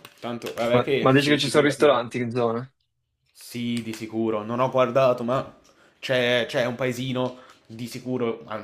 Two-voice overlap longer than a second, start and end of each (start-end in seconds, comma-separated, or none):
0.7-2.0